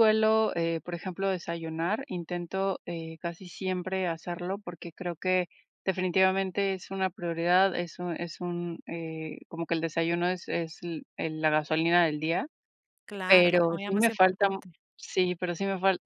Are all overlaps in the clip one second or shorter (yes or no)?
no